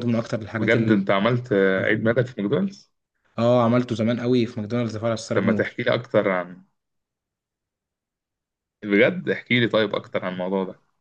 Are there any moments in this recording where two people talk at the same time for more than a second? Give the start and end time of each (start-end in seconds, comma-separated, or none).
0.6-2.0